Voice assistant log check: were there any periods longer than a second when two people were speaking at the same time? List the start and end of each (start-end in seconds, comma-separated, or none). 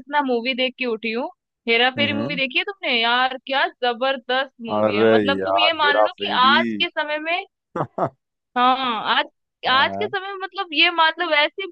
4.8-6.6